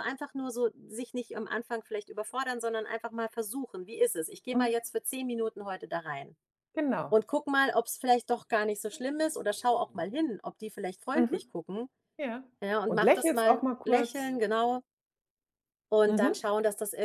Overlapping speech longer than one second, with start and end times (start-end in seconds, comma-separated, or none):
12.9-14.3